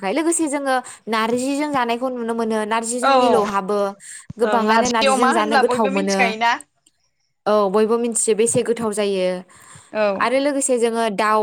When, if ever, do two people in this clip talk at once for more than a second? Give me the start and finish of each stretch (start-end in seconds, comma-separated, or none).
4.4-6.2